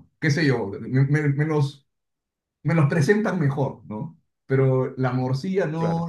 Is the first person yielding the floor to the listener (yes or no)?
no